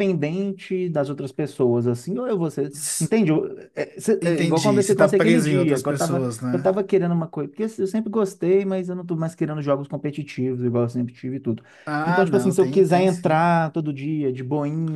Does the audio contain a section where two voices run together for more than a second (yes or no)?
yes